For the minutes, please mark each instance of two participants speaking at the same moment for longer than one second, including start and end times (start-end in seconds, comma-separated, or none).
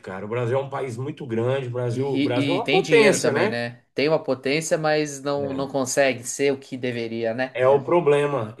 1.9-3.6